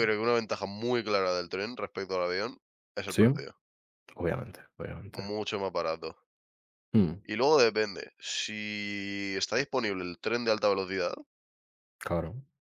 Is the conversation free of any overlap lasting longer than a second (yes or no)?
yes